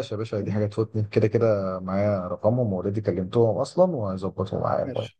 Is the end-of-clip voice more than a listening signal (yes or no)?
yes